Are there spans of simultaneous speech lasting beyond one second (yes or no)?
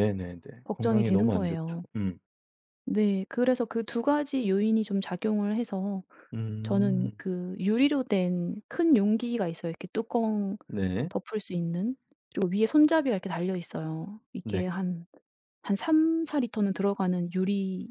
yes